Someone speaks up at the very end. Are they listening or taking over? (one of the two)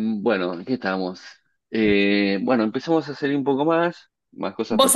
taking over